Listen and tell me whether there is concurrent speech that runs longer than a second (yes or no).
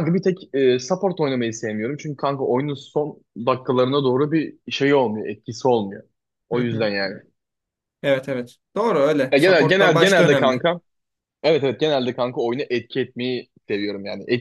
yes